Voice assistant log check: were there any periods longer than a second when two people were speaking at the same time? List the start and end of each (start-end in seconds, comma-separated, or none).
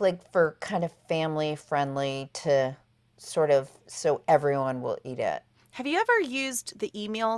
none